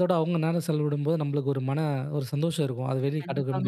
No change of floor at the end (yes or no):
no